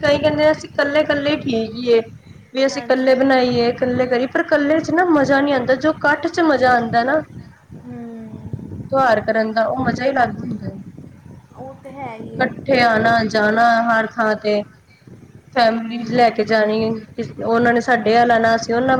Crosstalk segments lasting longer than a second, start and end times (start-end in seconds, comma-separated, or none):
none